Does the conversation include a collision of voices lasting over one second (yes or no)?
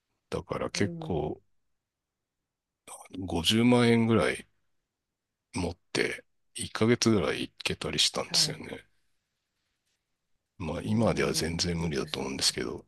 yes